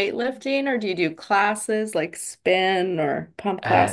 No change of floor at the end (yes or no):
no